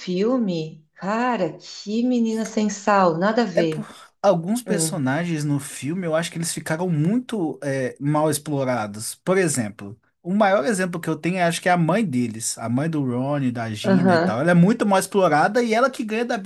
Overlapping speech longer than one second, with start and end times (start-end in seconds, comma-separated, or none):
none